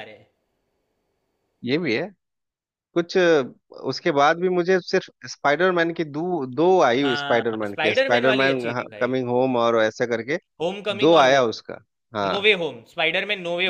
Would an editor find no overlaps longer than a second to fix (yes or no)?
no